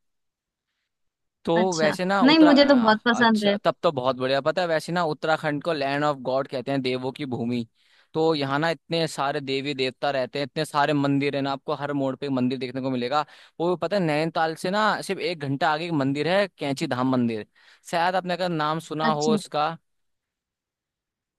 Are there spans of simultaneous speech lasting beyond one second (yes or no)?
yes